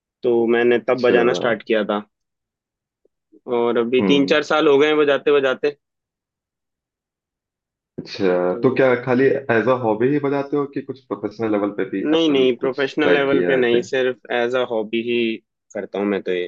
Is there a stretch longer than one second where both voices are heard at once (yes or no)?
yes